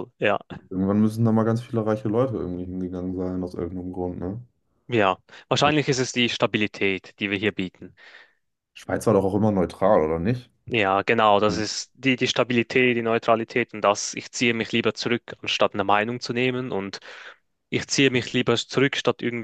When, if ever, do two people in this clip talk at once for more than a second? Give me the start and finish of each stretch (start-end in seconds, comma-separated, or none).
none